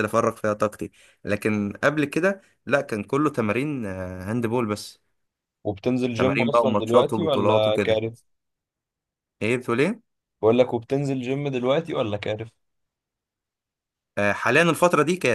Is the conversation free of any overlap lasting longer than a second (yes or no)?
no